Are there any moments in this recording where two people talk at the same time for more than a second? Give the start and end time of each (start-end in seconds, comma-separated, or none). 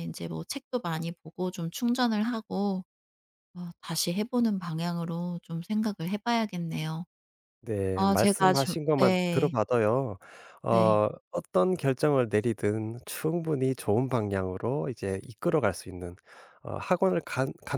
7.9-9.5